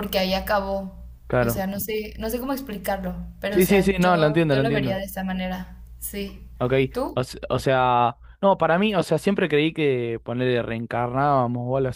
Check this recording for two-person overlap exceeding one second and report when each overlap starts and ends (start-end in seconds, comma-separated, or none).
3.5-5.0